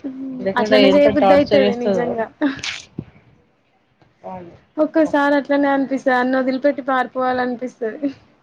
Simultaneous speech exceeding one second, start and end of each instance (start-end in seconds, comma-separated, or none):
0.6-2.2